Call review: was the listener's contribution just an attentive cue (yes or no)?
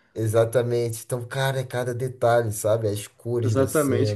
no